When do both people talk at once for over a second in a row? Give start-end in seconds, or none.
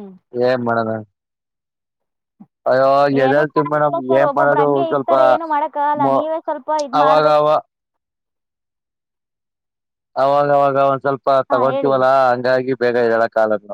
3.3-5.1